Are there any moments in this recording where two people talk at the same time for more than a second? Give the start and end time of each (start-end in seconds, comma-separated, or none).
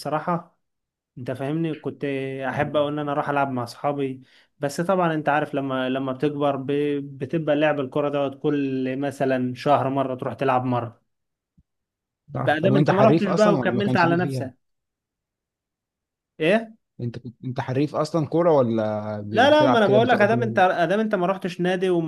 12.4-14.5, 19.3-20.5